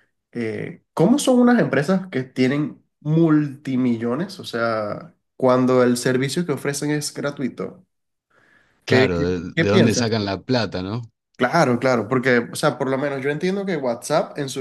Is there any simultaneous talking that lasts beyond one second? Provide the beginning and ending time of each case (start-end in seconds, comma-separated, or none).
8.9-10.3